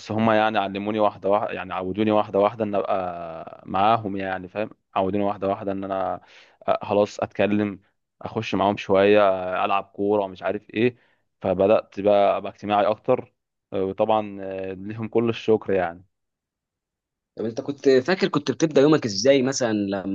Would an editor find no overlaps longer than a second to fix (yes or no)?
yes